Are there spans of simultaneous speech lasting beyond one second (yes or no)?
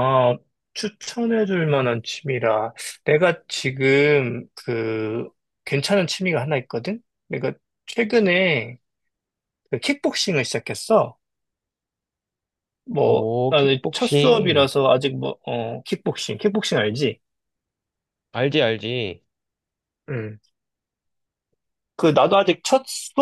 yes